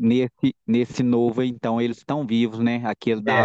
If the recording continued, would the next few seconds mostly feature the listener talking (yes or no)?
yes